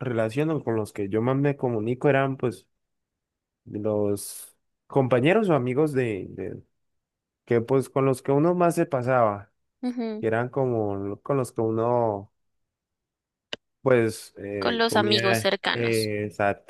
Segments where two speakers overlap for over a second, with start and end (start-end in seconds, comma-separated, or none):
14.6-16.1